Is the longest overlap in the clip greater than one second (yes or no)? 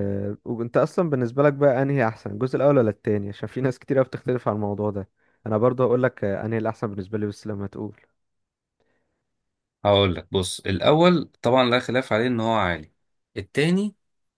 no